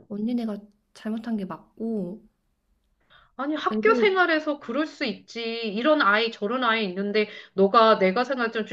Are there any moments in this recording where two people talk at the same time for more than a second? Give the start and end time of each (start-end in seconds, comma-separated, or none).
none